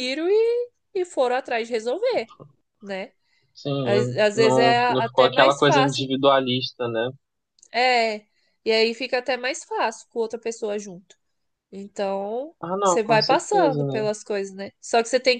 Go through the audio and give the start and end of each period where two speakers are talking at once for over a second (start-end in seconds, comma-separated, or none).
3.8-6.1, 12.6-14.0